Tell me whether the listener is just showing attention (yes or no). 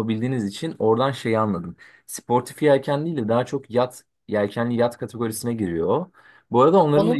yes